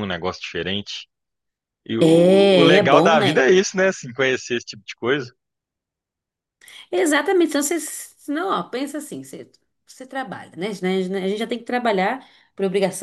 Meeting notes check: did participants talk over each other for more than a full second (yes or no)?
yes